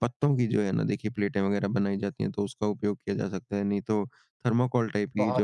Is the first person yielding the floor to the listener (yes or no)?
no